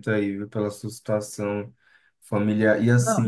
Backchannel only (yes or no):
yes